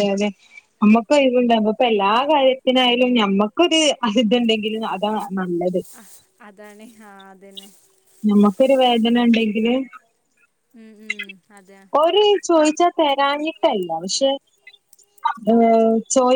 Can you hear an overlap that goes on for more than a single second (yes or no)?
no